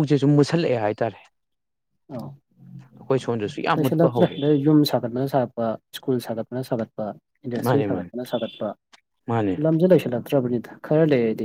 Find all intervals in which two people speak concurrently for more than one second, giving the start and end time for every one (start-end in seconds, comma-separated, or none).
none